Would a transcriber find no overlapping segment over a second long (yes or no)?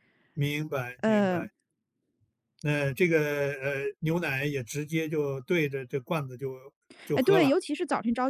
yes